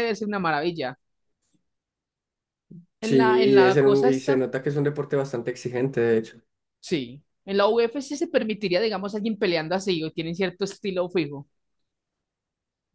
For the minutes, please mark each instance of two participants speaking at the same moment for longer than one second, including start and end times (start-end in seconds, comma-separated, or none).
3.0-4.4